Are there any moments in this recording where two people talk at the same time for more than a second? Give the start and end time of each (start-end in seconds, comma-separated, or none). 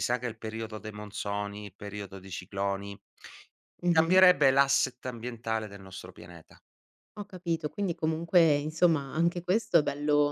none